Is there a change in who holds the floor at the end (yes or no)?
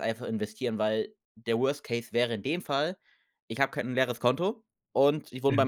no